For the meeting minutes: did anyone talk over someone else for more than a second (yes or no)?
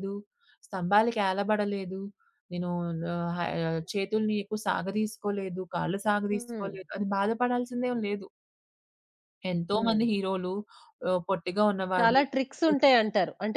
no